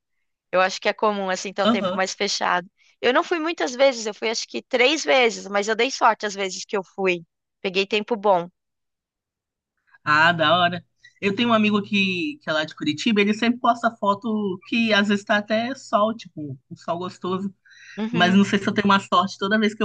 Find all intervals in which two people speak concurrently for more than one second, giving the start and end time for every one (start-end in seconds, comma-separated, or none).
none